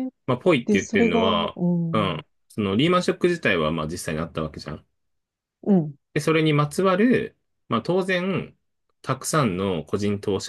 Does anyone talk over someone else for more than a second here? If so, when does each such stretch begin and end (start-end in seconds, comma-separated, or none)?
0.6-2.2